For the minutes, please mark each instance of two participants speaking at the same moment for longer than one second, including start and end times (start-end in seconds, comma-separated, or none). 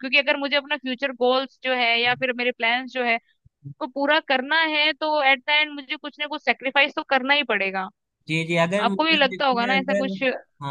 8.8-10.1